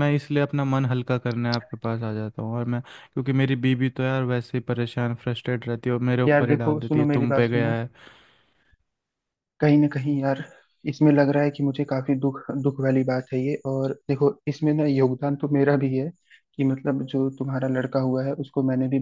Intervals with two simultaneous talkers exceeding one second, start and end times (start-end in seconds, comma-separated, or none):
6.3-7.8